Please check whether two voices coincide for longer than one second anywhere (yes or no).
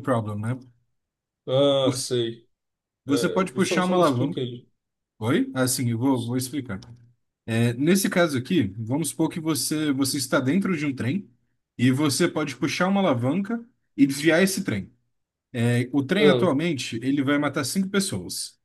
yes